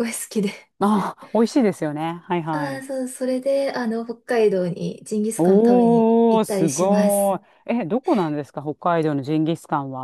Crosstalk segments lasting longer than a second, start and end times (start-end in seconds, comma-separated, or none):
5.4-7.4